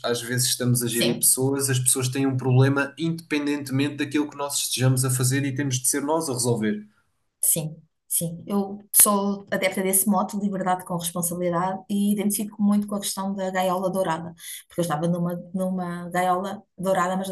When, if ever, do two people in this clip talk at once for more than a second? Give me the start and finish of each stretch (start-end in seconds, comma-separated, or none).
none